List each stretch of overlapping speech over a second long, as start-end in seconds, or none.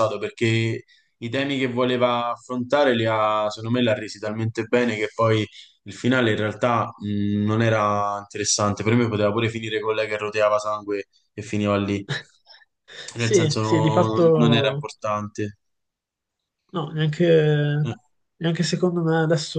13.2-14.8